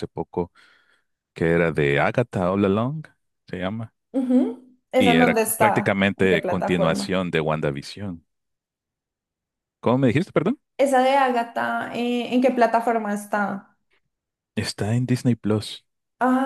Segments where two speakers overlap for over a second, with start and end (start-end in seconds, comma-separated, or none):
5.0-7.2